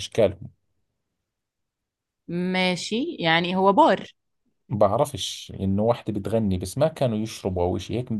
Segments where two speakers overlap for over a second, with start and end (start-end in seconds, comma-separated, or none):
none